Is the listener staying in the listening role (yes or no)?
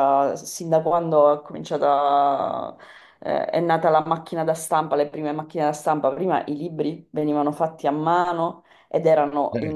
yes